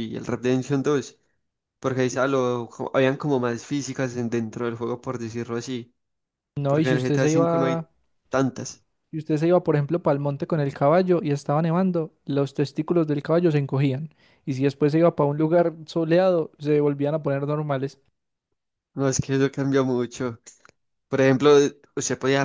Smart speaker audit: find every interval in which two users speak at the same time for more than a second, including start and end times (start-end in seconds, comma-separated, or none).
6.7-7.9